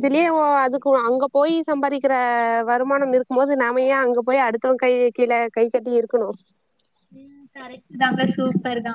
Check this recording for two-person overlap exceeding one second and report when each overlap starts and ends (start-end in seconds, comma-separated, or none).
none